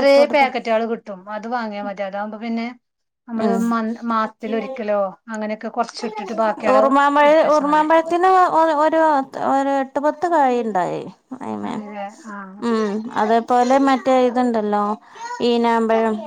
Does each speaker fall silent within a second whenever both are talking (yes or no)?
yes